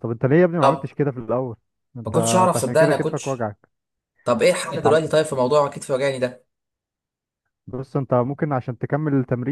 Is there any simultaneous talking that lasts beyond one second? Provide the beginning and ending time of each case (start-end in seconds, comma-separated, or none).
2.0-3.5